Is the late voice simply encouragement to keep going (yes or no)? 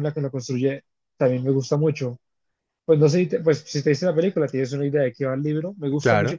yes